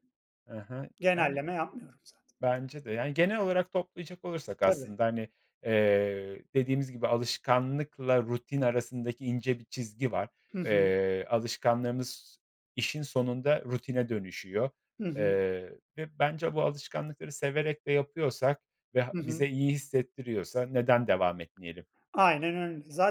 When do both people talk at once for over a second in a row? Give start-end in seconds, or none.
none